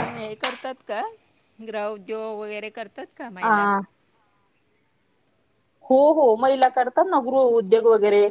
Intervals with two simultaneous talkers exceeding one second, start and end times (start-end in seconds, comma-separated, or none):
none